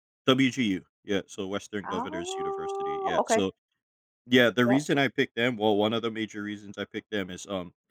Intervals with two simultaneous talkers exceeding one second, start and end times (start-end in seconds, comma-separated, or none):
1.9-3.4